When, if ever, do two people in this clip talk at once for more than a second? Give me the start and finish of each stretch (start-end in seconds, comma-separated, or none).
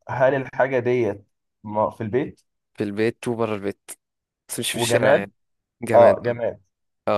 none